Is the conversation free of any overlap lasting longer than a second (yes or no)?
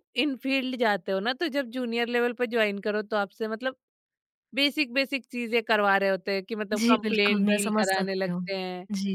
no